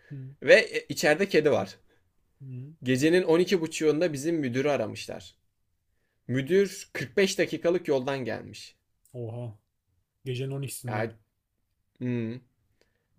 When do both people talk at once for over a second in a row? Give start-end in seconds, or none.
none